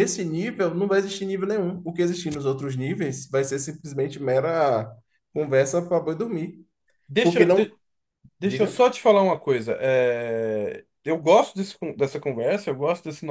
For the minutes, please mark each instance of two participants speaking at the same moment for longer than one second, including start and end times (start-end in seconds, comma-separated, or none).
none